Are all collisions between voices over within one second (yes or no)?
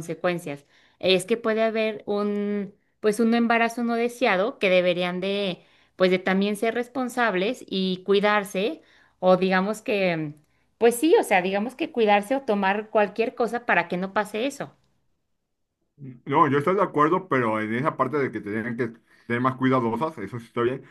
yes